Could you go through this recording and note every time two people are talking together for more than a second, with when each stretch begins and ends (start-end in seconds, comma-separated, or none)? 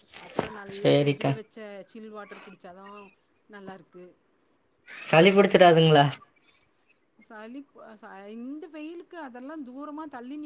none